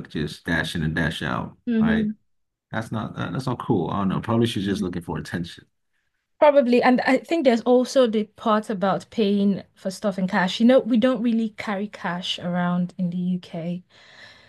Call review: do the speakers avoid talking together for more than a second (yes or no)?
yes